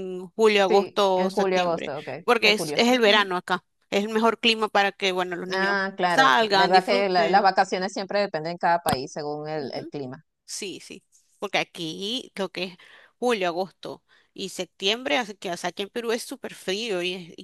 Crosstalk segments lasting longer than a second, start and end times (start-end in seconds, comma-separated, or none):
0.7-3.3, 5.5-7.5